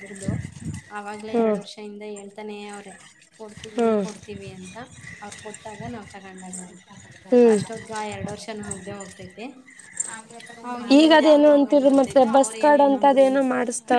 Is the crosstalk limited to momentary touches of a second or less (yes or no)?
no